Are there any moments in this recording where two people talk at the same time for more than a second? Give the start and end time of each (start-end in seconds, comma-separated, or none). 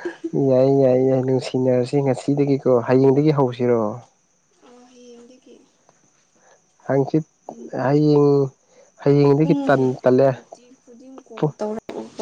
none